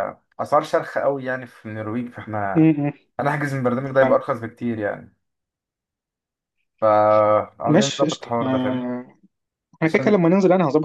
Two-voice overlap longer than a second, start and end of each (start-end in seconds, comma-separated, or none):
7.7-8.9